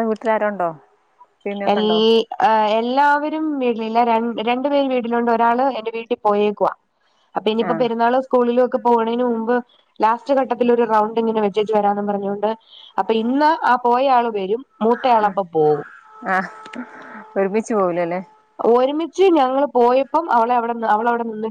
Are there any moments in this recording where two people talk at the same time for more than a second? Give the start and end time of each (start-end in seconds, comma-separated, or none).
none